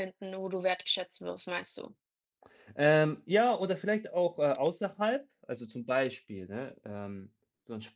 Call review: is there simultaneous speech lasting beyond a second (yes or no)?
no